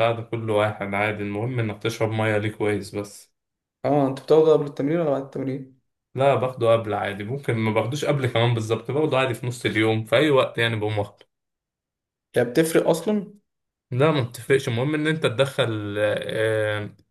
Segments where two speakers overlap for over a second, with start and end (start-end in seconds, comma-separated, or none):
none